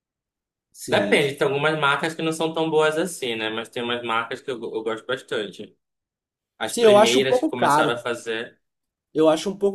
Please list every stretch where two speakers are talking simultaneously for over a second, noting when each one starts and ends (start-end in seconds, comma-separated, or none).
6.7-8.0